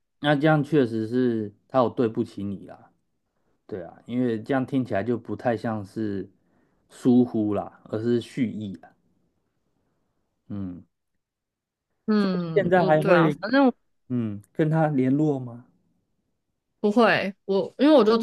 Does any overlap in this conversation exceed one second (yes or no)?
yes